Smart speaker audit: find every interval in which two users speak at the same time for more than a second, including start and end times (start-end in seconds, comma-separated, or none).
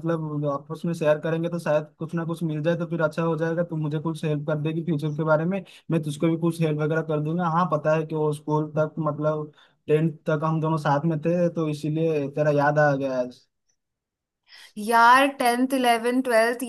none